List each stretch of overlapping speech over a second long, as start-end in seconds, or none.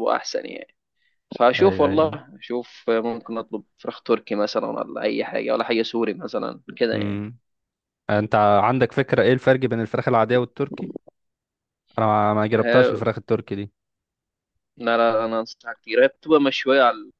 none